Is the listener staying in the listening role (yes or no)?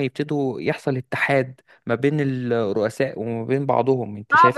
no